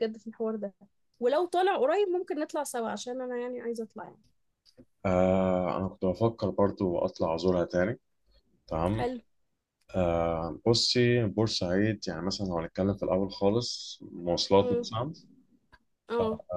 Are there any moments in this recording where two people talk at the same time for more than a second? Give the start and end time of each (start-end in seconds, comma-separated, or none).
none